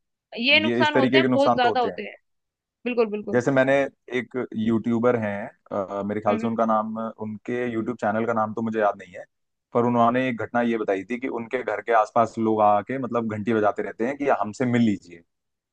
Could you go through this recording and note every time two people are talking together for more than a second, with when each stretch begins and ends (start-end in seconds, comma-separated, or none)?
0.7-2.0